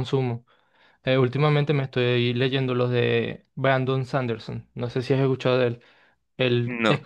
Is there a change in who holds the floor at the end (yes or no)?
no